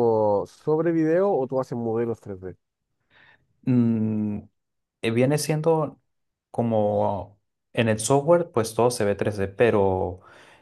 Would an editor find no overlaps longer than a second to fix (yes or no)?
yes